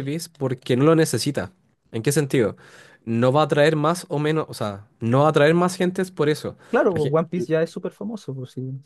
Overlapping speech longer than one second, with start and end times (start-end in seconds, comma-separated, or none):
none